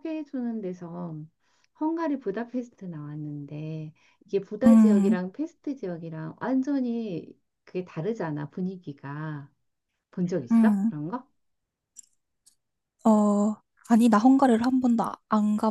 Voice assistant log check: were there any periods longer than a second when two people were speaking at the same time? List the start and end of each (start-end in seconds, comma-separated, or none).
none